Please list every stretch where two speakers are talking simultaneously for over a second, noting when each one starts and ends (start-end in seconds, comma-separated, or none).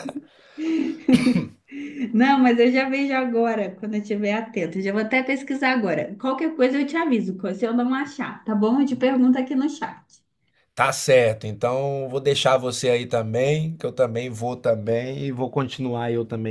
none